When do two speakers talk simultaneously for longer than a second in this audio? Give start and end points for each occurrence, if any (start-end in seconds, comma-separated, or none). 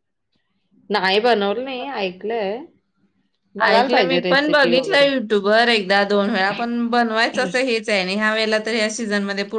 3.7-5.1